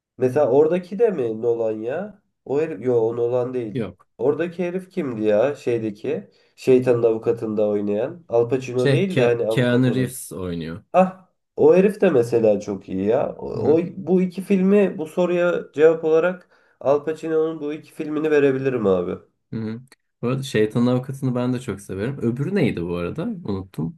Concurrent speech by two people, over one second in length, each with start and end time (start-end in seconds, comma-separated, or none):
8.8-10.1